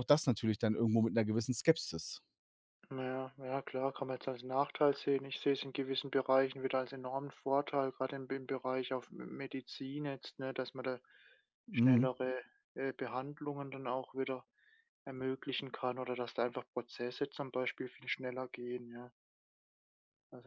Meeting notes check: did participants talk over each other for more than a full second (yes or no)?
no